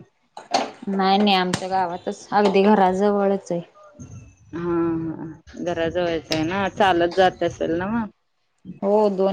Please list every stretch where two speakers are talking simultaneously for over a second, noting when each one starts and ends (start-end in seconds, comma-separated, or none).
none